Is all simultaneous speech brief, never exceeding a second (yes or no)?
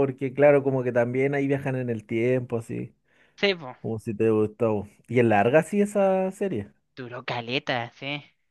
yes